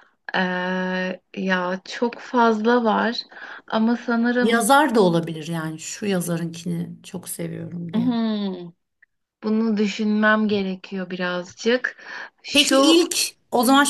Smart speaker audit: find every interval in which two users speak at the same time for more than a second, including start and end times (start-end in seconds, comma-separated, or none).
none